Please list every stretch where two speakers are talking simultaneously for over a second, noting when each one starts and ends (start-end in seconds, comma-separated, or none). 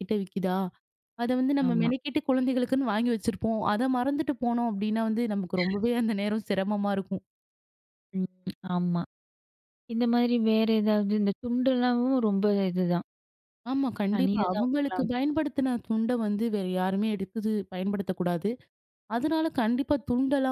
14.1-15.4